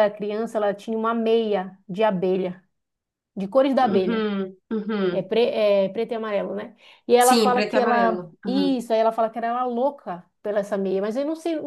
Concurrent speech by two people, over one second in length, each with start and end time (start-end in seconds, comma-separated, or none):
7.2-8.8